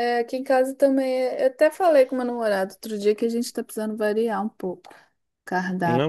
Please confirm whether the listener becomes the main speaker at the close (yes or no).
yes